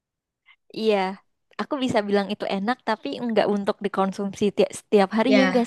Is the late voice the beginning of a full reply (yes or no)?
yes